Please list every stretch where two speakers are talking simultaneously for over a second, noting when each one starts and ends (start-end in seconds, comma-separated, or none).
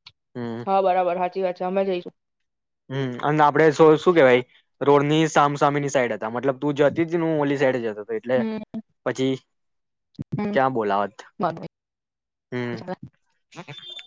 none